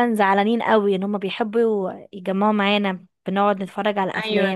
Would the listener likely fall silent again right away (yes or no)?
no